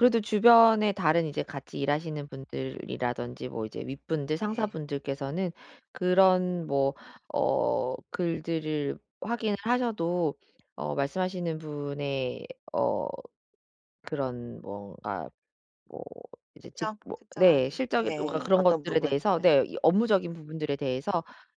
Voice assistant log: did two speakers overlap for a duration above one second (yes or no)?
yes